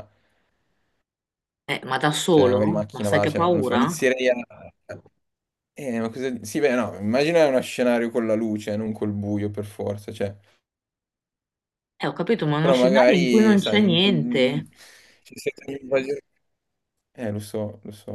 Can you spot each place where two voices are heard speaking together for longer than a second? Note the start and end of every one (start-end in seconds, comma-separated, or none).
2.3-4.0, 12.6-14.6